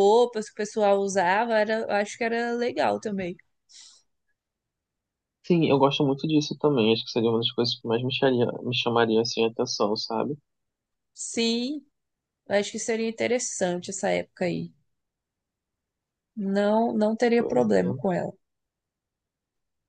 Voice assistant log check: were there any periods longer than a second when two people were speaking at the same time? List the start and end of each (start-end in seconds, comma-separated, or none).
none